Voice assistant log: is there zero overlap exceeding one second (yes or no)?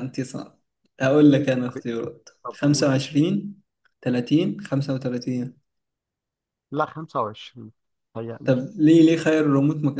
yes